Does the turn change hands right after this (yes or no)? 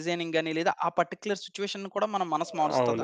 yes